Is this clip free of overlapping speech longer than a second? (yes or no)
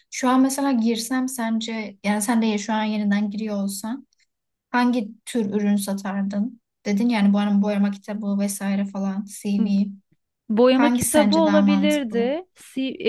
no